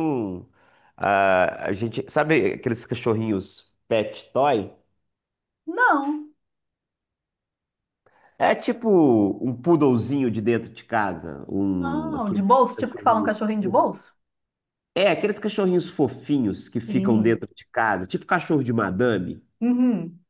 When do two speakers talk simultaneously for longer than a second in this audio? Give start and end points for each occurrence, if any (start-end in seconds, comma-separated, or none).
11.8-13.3